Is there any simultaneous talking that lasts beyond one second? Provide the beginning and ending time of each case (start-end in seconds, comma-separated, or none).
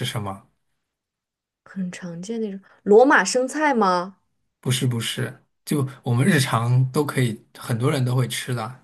none